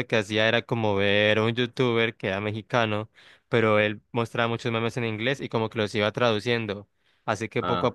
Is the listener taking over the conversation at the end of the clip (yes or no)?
no